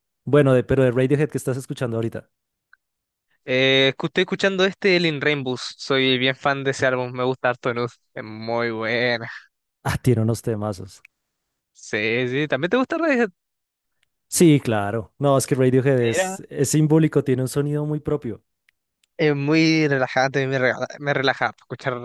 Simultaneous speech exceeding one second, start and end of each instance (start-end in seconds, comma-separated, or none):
none